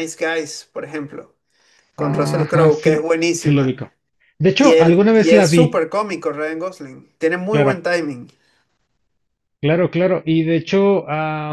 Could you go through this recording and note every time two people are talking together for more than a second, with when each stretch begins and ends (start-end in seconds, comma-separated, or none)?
2.0-3.8, 4.6-5.8